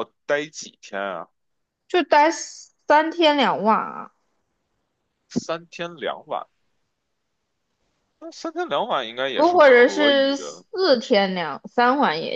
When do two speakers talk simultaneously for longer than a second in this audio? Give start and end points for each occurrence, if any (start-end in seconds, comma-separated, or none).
9.3-10.6